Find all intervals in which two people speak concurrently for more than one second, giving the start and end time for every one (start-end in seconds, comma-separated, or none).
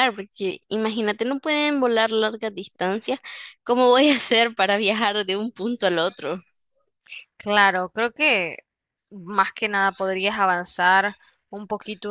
none